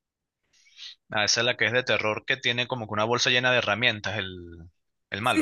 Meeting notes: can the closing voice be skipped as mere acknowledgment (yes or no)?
no